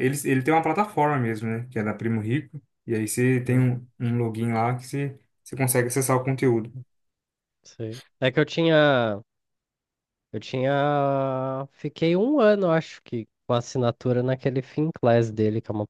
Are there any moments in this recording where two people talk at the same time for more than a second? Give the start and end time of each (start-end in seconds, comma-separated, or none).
none